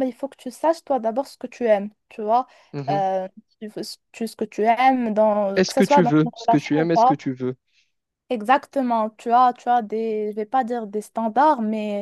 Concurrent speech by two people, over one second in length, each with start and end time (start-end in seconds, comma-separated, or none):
5.5-7.2